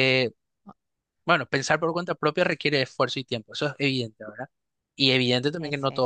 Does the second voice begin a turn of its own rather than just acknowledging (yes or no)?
no